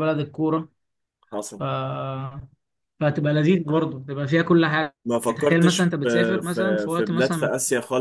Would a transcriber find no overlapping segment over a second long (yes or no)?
no